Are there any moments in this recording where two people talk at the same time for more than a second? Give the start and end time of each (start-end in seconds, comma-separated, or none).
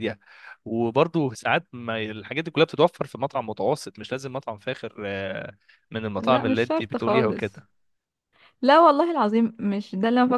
6.2-7.6